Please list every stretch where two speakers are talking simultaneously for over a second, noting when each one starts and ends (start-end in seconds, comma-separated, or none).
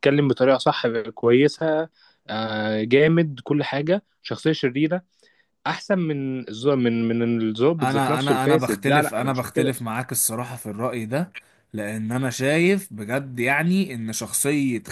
7.8-9.8